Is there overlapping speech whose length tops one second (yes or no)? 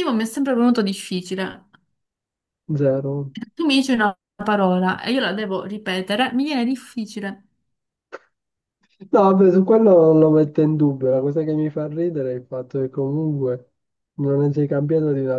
no